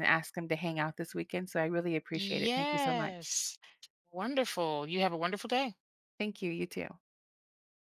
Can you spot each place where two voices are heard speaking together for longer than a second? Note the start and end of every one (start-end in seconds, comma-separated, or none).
2.1-3.4